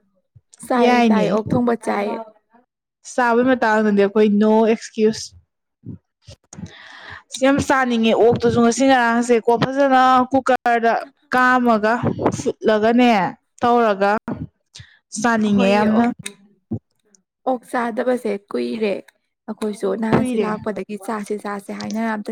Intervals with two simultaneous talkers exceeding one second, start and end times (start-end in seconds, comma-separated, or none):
none